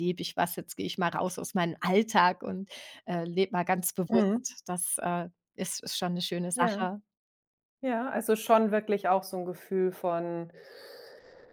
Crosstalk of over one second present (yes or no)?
no